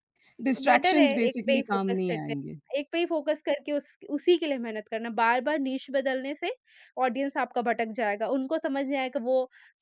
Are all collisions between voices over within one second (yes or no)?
no